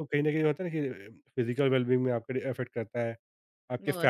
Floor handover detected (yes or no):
no